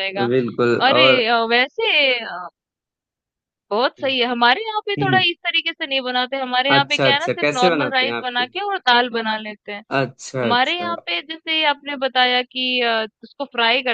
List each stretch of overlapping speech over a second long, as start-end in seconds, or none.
6.8-8.4